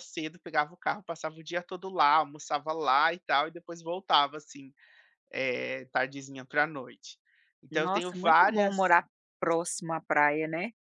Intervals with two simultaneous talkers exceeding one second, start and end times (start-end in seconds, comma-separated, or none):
7.7-8.9